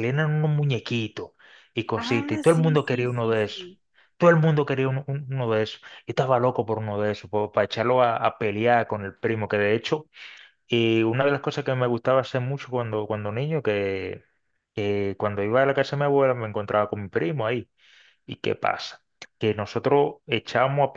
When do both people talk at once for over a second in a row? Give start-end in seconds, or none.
1.9-3.7